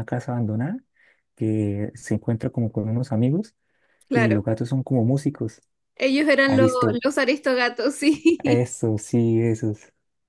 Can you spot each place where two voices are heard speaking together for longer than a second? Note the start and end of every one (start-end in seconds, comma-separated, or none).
none